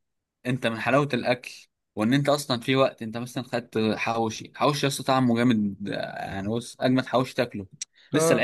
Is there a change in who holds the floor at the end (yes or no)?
no